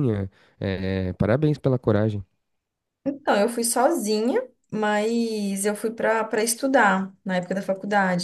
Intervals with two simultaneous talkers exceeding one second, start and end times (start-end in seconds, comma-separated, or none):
none